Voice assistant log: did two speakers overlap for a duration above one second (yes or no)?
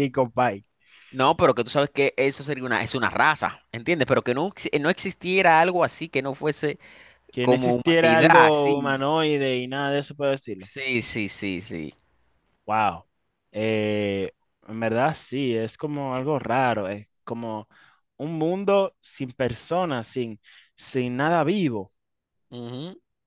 yes